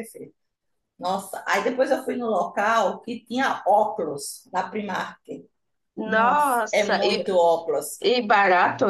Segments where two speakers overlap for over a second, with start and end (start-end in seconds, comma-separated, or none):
6.0-7.2